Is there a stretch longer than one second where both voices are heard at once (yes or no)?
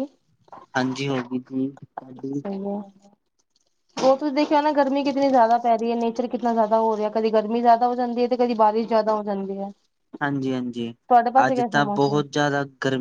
no